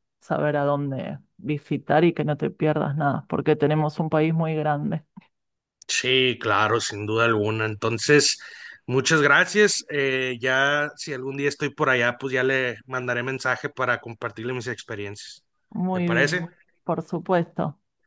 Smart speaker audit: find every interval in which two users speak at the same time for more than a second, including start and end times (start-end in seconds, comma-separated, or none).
none